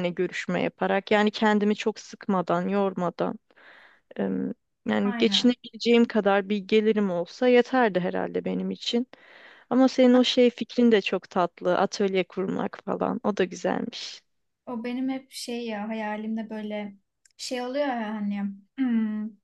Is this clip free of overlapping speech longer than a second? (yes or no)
yes